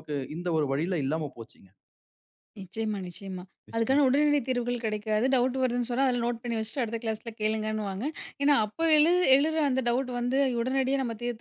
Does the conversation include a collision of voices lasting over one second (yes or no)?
no